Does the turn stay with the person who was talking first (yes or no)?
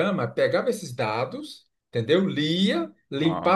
yes